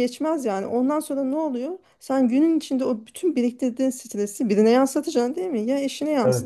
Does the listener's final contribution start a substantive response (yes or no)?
no